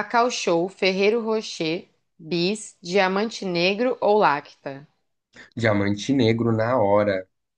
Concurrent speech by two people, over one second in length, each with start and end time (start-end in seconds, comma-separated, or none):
none